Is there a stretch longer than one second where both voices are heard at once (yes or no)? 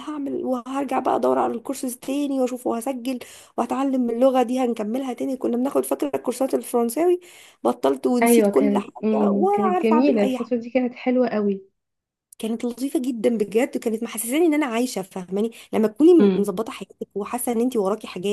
yes